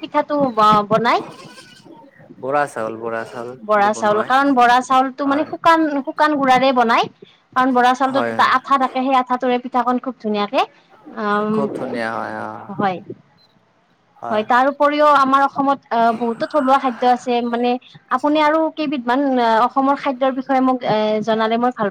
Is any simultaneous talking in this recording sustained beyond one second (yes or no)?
no